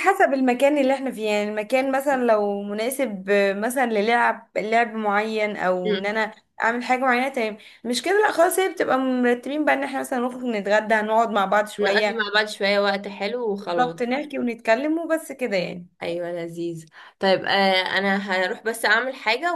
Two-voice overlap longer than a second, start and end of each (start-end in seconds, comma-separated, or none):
none